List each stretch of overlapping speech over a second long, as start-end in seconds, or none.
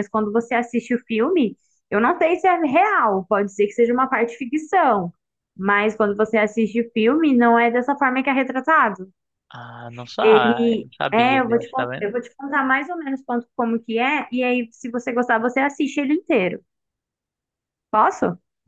10.2-12.1